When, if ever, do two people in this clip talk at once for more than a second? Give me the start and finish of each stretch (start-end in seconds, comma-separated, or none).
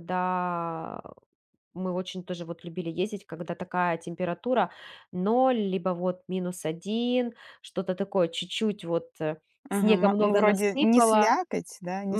9.8-11.4